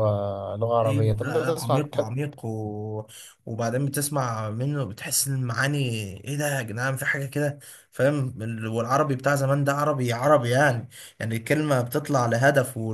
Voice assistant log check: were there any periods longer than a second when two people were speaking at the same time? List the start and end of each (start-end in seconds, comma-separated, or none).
0.8-2.1